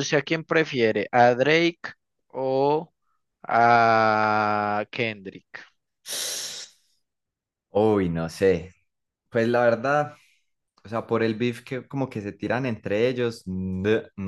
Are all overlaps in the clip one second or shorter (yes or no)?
yes